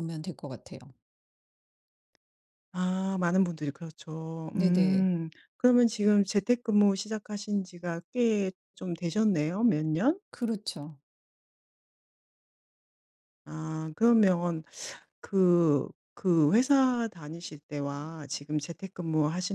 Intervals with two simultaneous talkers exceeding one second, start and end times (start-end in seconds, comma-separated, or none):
none